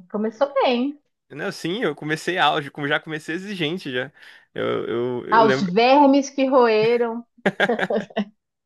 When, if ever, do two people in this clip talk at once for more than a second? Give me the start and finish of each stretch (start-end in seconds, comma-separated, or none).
none